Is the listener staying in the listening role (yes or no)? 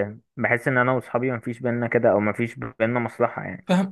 no